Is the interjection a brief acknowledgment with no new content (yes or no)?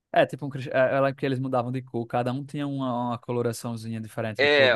no